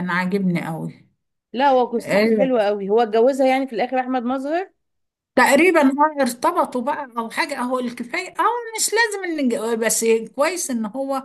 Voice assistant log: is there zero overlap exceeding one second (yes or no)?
yes